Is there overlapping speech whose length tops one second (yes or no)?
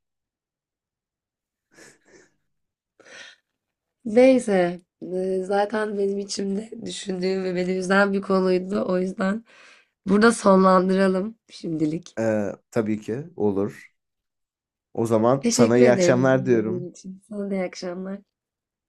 yes